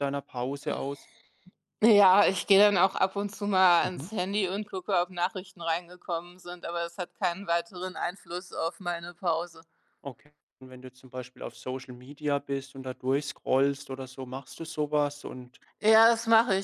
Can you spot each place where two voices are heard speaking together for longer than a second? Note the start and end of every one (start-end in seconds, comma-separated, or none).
none